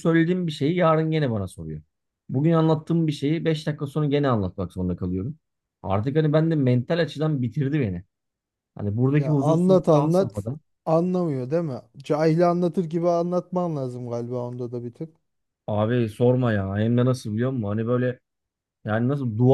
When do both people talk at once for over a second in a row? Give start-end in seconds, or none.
9.2-10.4